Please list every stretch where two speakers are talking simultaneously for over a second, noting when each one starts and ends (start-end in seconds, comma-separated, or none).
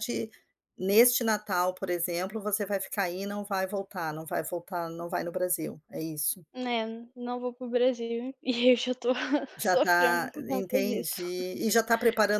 9.6-11.1